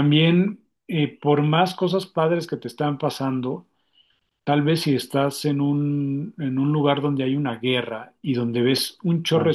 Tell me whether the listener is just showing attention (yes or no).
yes